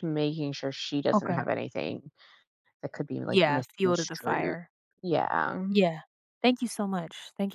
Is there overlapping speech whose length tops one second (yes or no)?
yes